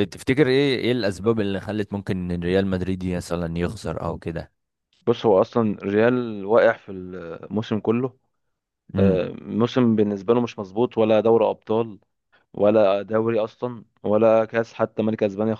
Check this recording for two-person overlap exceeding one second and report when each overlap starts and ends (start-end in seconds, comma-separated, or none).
none